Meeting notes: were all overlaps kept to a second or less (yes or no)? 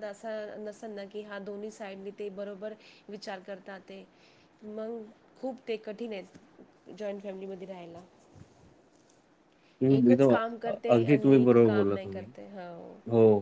no